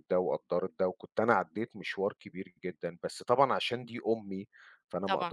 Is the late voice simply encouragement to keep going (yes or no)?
yes